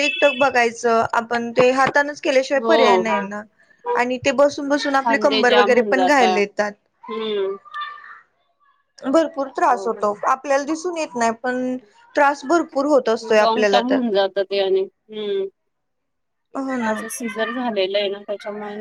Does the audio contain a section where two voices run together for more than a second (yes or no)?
yes